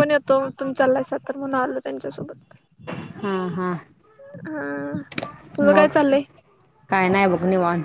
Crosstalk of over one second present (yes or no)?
no